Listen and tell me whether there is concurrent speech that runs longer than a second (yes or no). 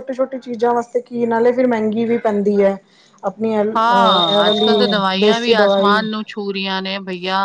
yes